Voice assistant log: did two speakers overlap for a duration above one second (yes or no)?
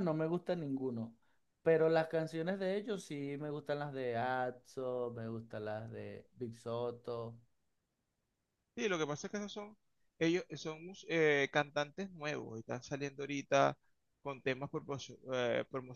no